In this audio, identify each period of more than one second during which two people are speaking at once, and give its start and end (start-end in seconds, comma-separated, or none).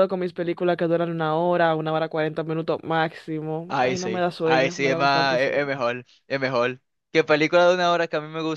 3.7-5.6